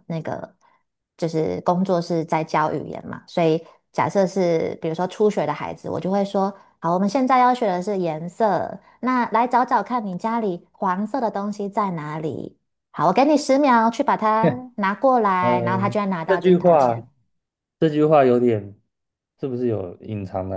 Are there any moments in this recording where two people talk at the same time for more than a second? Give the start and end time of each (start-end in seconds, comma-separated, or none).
15.4-17.0